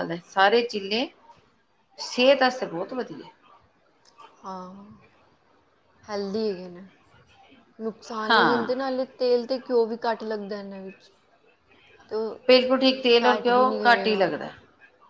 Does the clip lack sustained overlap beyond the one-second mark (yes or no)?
no